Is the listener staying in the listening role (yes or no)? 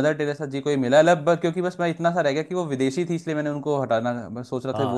no